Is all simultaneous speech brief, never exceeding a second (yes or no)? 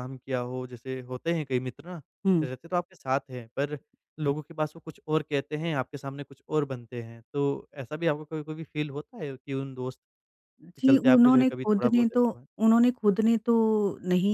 no